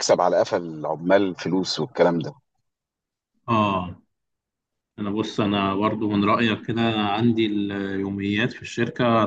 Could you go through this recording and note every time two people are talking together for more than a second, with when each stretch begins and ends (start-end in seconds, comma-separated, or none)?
none